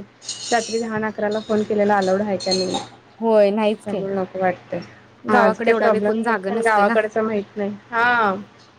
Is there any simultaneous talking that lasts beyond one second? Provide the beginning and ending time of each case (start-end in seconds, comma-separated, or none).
5.3-6.9